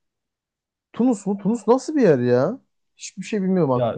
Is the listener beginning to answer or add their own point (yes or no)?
yes